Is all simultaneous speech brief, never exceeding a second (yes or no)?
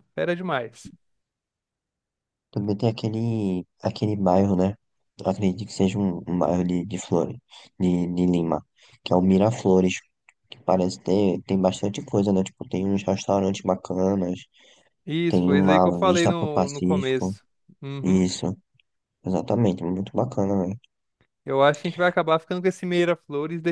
no